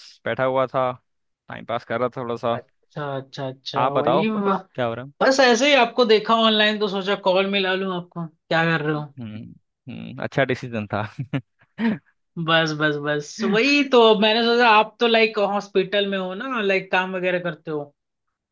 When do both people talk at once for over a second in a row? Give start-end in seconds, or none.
none